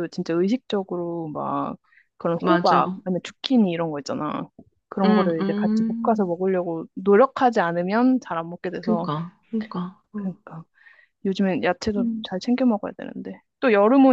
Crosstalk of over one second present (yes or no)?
yes